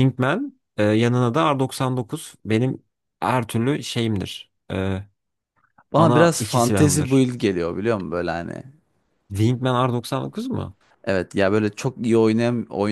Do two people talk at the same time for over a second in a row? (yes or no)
yes